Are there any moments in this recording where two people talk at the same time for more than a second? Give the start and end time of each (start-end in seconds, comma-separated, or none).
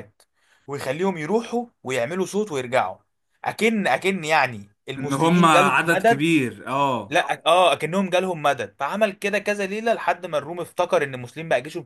5.0-6.2